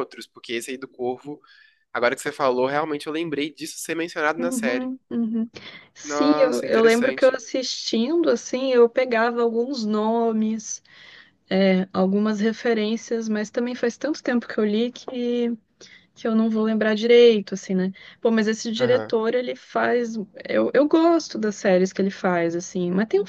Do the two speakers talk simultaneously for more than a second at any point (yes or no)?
yes